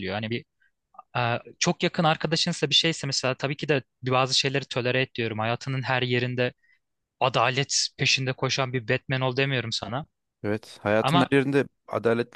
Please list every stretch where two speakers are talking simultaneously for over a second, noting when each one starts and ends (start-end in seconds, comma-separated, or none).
none